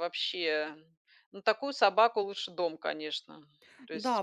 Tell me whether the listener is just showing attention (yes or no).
no